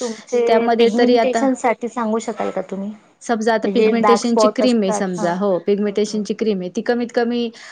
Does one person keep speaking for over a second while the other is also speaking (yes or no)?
yes